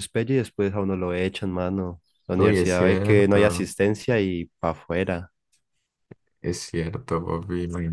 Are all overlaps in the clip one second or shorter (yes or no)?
no